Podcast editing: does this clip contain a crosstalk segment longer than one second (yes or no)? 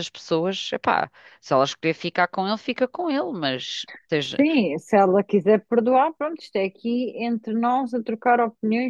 no